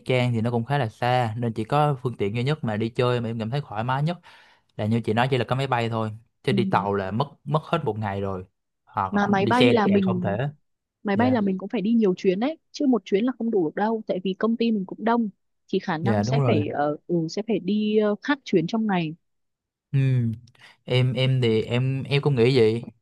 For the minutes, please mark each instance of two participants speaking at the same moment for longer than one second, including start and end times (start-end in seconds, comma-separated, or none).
9.1-10.4